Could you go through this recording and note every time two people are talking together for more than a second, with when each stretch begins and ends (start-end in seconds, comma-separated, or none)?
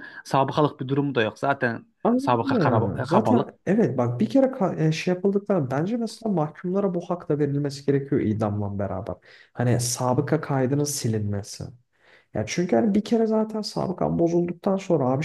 2.0-3.5